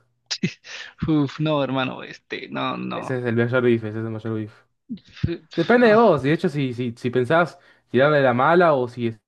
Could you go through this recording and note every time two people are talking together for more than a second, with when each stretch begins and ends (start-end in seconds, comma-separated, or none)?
none